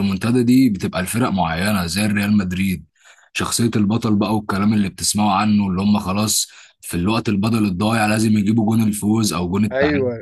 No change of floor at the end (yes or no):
no